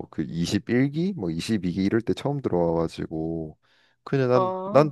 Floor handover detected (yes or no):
no